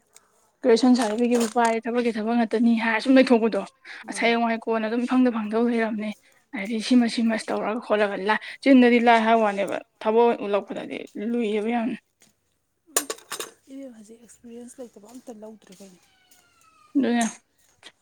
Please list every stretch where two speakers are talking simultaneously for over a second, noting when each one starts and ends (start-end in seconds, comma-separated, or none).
none